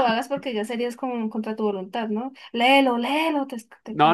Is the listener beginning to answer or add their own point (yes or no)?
yes